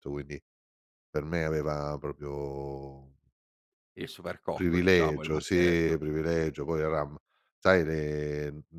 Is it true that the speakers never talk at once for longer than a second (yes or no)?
no